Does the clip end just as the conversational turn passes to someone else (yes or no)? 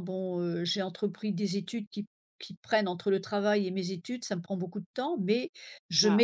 no